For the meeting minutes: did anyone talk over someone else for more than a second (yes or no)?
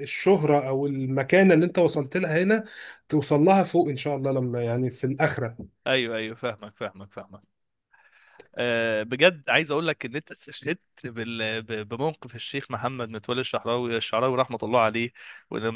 no